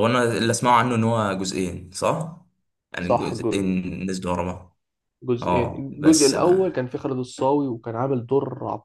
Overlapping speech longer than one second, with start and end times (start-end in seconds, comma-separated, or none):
5.4-6.8